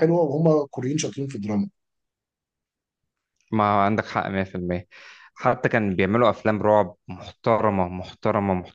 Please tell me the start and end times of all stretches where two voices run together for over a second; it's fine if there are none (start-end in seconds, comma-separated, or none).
none